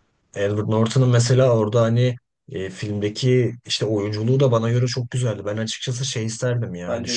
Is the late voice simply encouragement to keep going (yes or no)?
yes